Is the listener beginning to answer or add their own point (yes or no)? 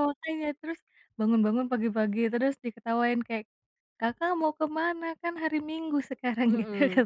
yes